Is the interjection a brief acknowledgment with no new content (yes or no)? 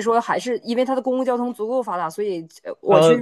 yes